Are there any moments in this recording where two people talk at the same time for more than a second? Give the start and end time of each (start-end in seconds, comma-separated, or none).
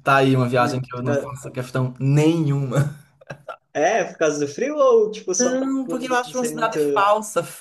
5.4-6.8